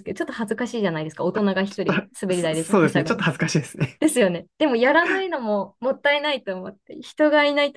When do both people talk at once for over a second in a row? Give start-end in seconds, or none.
1.7-3.2